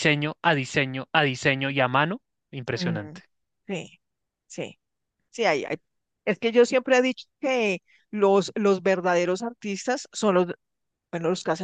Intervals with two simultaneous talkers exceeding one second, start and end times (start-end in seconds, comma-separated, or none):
none